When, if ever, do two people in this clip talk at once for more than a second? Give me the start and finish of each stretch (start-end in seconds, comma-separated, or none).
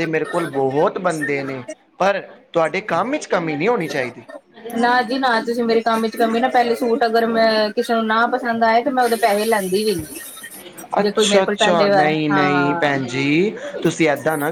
11.0-13.0